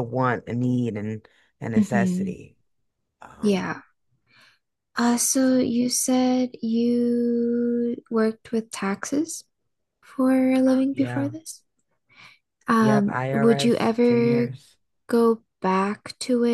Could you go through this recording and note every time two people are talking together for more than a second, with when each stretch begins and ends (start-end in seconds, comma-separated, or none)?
12.8-14.5